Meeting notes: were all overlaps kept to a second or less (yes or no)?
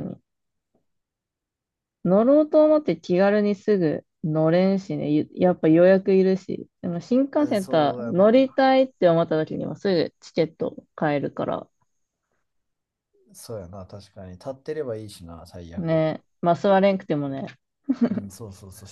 no